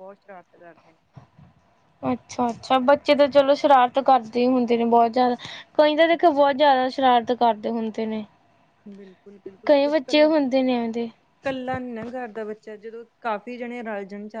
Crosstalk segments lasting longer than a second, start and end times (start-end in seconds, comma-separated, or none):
none